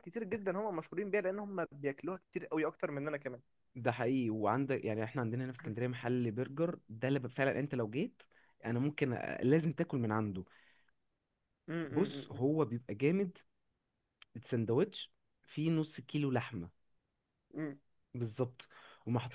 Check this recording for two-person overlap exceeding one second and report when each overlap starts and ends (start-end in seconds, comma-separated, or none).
none